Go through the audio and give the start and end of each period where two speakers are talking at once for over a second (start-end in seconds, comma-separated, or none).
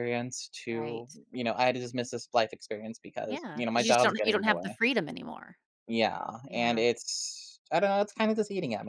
3.3-4.8